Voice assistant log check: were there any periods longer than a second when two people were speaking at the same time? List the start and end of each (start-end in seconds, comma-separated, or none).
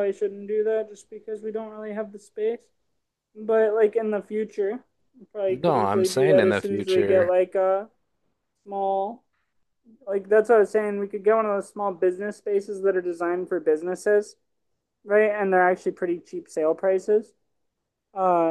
5.5-7.3